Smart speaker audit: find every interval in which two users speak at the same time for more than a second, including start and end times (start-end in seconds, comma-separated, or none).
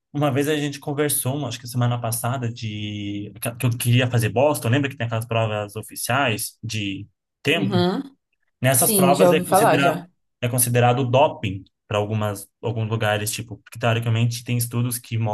8.7-10.0